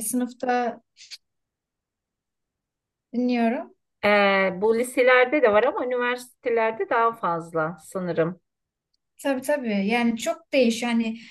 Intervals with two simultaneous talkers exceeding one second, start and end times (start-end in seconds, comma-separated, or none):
none